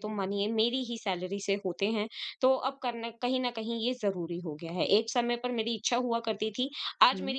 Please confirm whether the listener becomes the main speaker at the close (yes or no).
no